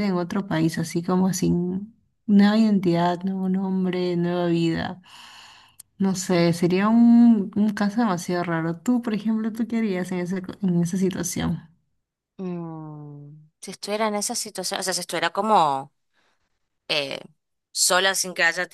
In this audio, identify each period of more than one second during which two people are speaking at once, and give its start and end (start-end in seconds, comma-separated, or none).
none